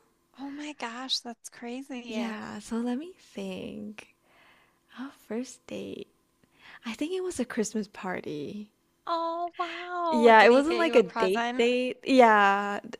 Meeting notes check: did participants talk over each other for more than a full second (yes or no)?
yes